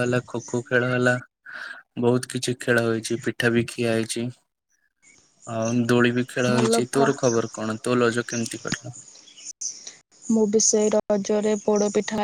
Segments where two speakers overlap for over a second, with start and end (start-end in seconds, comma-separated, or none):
none